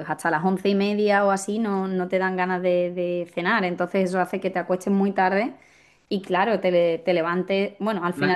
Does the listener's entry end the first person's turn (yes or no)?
no